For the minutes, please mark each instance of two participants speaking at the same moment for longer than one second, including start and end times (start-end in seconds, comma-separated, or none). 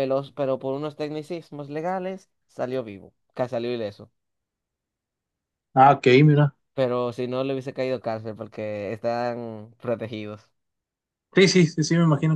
none